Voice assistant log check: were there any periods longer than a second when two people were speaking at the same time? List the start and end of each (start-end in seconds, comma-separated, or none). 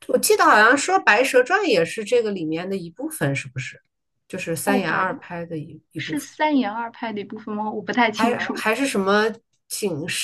none